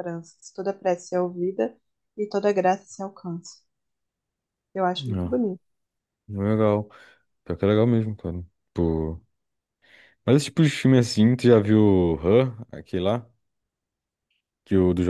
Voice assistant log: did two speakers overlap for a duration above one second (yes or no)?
no